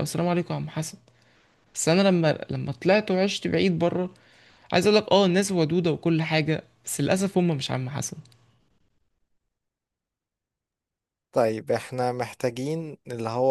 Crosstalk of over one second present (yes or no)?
no